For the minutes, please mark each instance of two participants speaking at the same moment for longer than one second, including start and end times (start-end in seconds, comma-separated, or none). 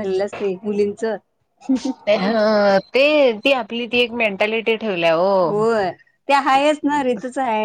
none